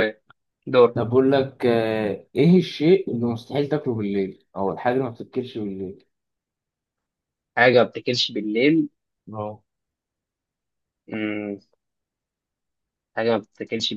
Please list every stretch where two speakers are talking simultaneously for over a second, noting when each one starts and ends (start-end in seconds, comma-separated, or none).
none